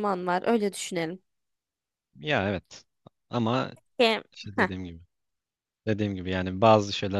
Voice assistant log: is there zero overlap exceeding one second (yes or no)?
yes